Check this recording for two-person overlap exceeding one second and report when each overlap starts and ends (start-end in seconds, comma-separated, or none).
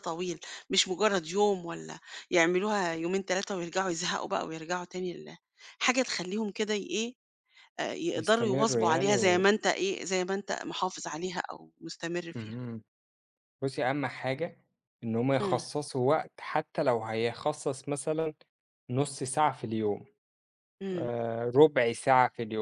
8.1-9.4